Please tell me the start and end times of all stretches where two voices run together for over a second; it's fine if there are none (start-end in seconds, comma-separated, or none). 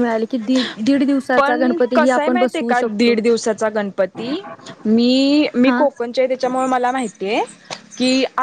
1.4-3.1